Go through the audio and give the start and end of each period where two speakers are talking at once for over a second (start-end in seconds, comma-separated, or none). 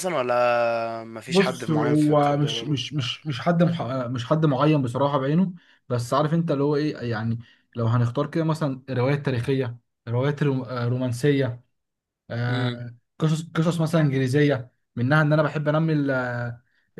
1.3-2.8